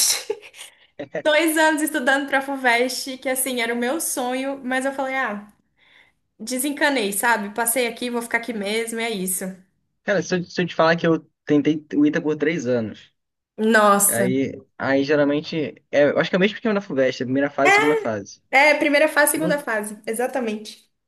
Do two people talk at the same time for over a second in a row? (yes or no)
no